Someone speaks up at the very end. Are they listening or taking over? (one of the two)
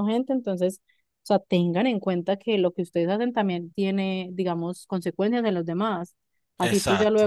listening